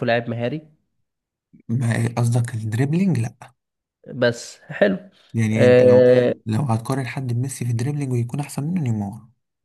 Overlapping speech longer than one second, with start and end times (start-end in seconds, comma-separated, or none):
none